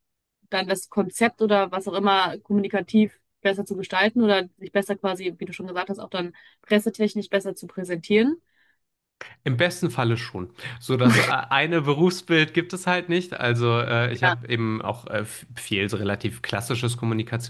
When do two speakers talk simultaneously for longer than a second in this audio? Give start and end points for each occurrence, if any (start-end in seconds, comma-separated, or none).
none